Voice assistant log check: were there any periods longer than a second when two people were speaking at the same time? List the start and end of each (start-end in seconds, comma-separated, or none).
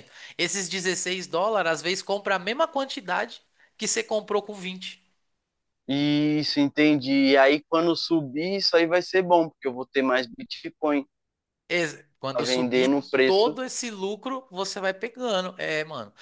12.3-13.5